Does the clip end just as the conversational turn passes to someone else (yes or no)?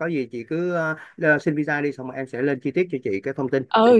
yes